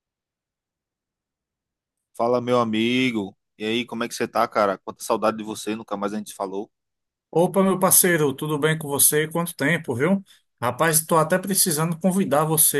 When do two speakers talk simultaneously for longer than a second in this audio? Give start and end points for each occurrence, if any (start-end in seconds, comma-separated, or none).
none